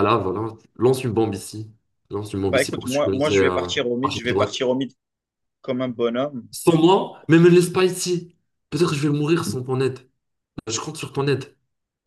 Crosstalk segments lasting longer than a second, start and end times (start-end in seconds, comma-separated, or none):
2.5-4.6